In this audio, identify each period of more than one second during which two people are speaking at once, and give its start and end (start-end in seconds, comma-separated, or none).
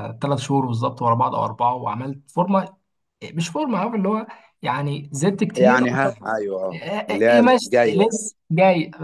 6.7-8.2